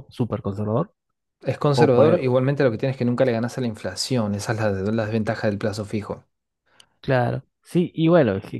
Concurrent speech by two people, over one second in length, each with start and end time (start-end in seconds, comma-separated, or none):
none